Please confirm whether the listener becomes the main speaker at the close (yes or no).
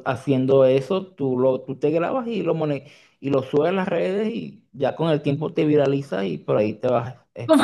yes